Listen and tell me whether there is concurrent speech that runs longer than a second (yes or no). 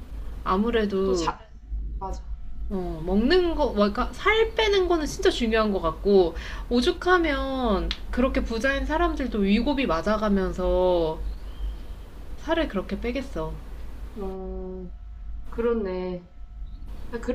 no